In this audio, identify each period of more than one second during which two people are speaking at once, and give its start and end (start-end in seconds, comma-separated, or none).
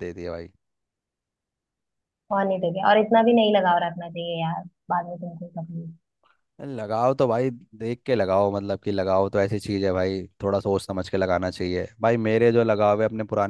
none